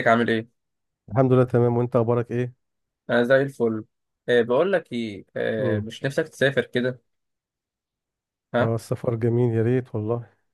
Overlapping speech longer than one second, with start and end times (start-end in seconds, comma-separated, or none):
none